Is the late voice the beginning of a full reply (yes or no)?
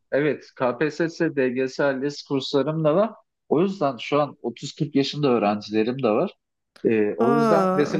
no